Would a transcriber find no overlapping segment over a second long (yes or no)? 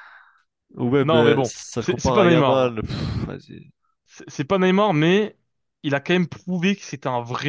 no